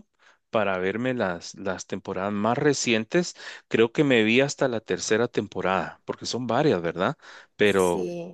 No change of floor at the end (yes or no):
yes